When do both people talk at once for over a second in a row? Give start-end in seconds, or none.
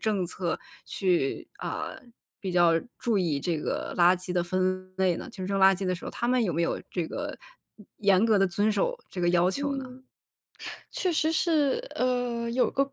none